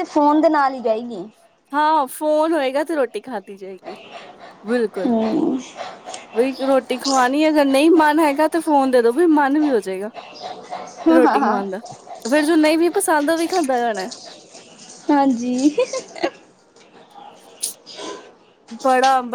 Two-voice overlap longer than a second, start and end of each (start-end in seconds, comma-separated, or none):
none